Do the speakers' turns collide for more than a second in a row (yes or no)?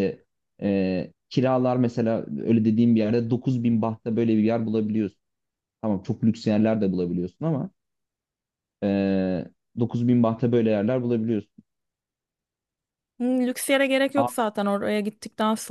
no